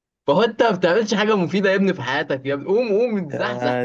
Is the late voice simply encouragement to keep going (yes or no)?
yes